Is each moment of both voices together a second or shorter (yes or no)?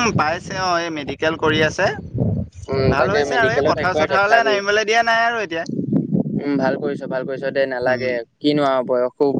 no